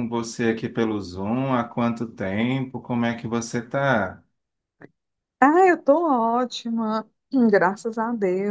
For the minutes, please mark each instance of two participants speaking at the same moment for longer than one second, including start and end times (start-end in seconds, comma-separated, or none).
none